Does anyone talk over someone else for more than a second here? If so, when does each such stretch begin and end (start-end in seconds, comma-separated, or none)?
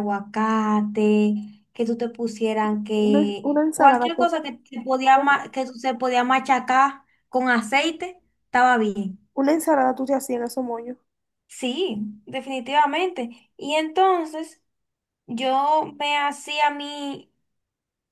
2.9-4.3